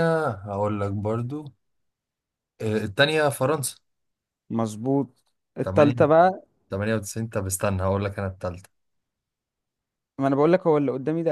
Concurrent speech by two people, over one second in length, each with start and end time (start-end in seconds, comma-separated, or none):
none